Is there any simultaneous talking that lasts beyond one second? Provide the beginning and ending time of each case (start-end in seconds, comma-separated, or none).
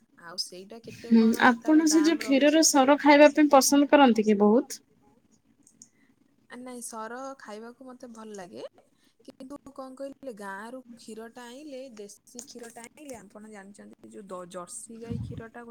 1.1-4.7